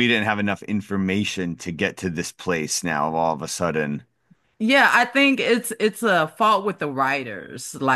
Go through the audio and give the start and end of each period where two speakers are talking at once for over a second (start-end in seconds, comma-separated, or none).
none